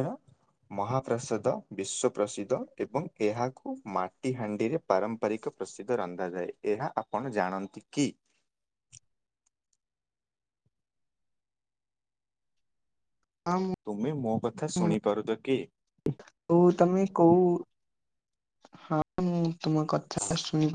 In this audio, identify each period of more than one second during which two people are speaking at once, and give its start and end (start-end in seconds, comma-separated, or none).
13.8-15.6